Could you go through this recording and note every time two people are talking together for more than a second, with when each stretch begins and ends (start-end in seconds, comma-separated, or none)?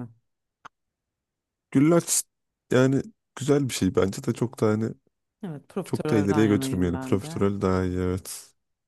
5.8-7.4